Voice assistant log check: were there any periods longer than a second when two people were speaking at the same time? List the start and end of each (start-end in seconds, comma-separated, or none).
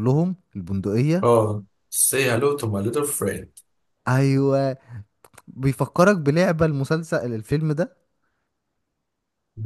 none